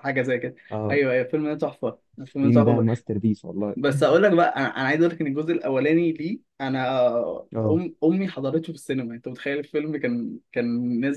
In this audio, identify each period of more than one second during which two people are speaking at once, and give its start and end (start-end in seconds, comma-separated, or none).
none